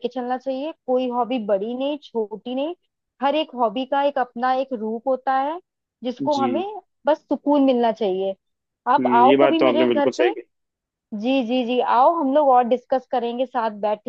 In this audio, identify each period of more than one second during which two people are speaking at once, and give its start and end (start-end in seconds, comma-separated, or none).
9.0-10.3